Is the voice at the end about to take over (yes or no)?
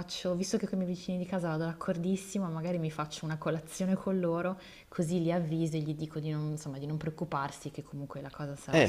yes